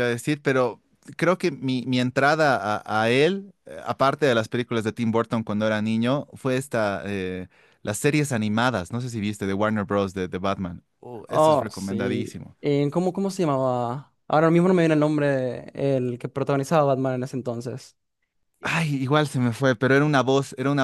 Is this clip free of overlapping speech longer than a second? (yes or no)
no